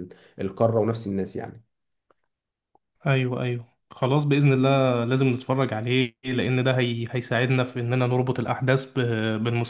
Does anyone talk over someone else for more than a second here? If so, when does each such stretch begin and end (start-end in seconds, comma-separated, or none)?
none